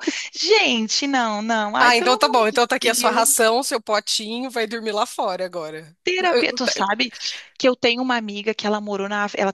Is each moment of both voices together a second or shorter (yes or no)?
no